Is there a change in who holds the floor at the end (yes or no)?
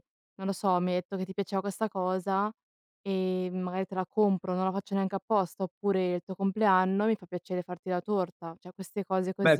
yes